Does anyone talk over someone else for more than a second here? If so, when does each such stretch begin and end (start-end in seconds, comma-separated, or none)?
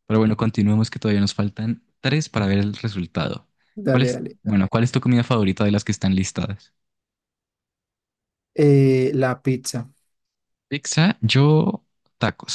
none